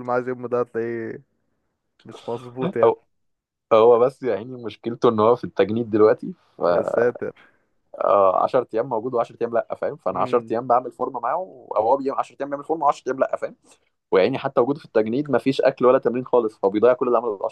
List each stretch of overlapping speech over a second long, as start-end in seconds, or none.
none